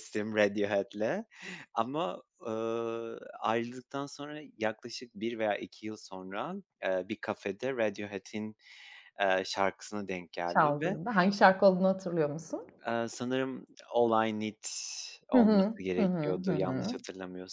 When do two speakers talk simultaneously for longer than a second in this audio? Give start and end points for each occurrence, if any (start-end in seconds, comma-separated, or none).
15.3-17.0